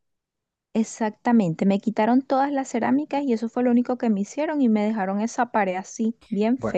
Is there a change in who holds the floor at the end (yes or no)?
yes